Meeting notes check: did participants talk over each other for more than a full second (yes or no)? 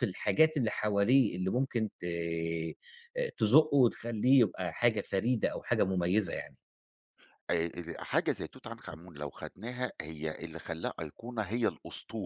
no